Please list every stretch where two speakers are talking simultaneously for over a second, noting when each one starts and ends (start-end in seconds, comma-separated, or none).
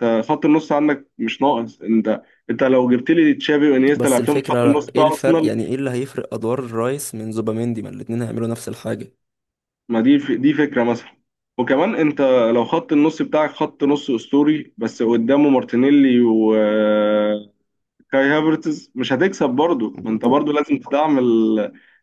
4.0-5.5